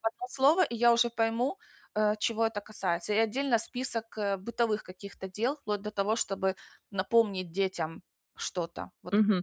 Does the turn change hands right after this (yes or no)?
yes